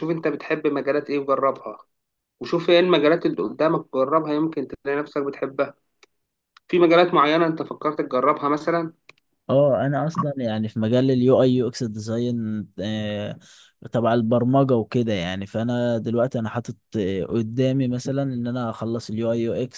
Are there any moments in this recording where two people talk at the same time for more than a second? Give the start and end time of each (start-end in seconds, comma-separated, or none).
none